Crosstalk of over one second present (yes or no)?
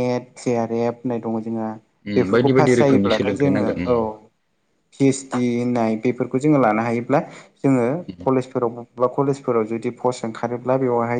yes